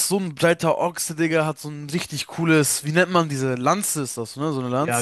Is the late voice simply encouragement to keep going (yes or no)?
no